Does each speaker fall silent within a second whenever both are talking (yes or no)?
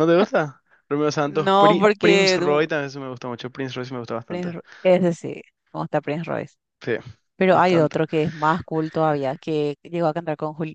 no